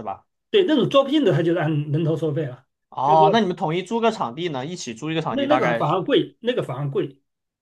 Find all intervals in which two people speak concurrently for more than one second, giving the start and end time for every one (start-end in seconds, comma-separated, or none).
none